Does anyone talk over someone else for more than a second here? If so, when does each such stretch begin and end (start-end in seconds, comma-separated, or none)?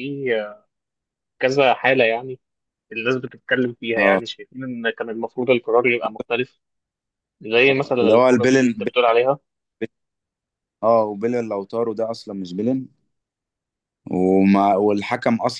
7.7-9.0